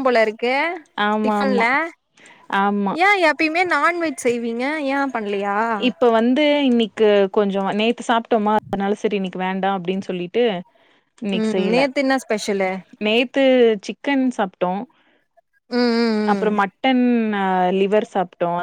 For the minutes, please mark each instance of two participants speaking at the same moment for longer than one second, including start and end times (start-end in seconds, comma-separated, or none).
none